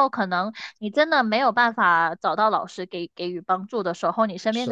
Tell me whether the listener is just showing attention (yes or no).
yes